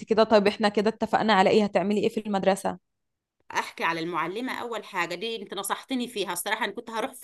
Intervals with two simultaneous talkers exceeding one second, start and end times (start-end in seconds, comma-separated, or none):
none